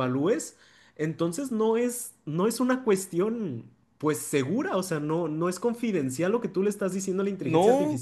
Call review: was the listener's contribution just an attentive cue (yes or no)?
no